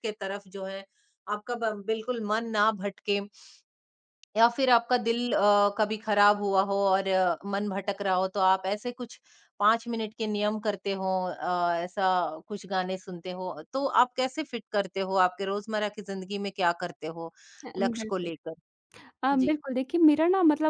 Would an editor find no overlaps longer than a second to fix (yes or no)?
yes